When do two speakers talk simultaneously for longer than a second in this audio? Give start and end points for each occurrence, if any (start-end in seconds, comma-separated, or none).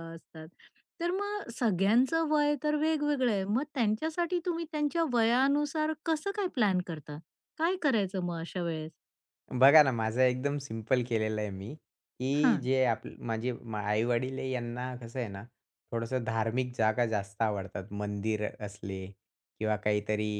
none